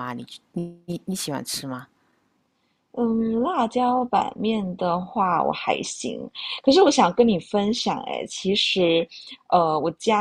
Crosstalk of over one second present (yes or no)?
no